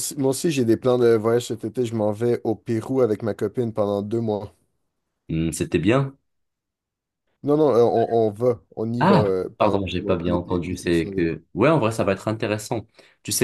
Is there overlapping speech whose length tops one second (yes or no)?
yes